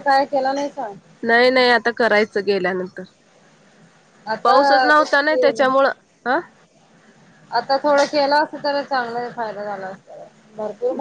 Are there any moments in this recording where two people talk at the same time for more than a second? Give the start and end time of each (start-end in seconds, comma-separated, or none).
4.4-5.6